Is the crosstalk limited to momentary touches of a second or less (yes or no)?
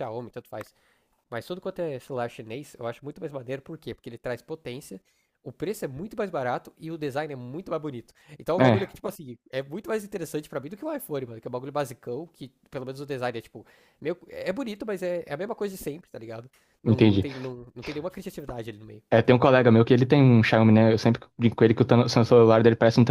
yes